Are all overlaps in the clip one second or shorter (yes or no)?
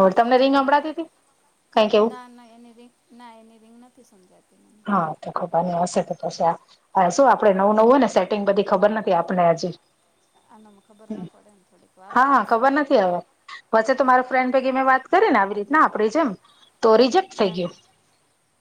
yes